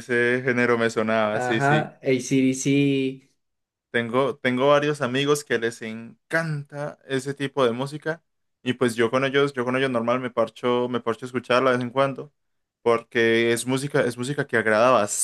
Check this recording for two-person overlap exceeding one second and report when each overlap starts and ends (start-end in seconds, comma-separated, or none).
none